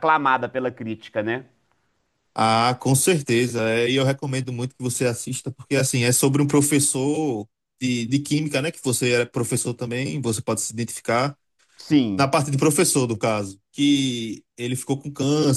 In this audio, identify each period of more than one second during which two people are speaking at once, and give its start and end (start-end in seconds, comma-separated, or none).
none